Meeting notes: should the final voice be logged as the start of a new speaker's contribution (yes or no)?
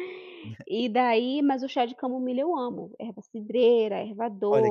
yes